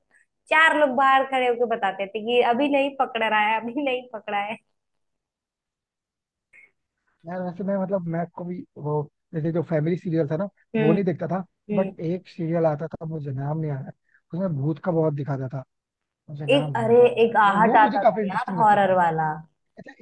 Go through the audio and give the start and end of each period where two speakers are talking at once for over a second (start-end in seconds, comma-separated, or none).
16.5-18.9